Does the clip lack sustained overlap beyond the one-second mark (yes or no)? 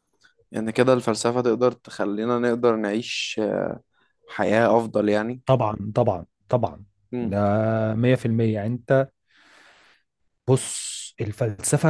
yes